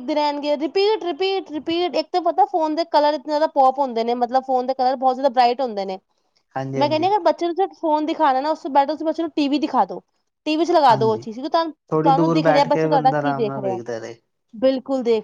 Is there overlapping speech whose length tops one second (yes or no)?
yes